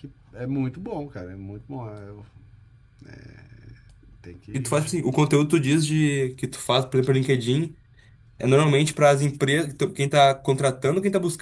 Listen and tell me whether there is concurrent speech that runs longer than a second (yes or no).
no